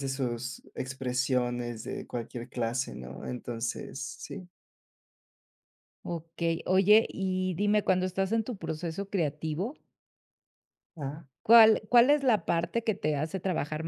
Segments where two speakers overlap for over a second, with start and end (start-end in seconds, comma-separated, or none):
none